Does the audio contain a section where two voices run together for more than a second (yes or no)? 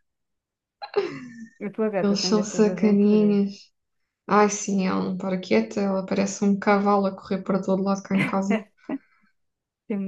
yes